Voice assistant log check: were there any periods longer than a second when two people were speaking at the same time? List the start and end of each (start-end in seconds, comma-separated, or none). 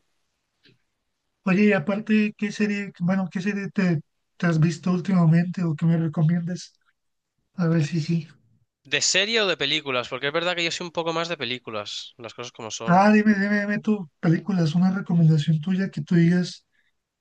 none